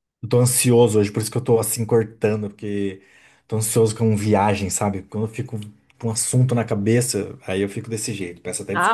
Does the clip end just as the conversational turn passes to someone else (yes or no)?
yes